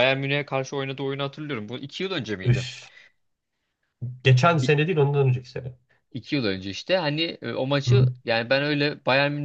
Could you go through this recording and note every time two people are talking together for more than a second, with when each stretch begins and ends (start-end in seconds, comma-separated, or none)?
none